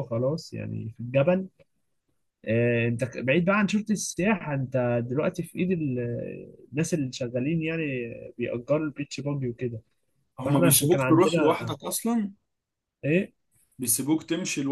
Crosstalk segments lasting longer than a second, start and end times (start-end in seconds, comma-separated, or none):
10.4-11.8